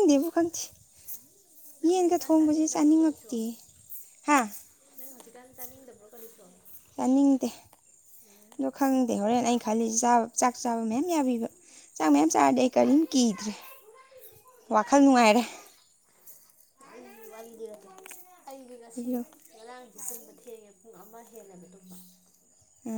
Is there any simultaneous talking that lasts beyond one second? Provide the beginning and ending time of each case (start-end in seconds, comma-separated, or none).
1.9-3.3